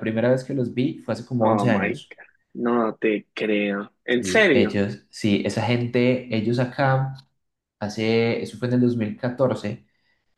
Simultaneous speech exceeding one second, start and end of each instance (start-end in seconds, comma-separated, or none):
none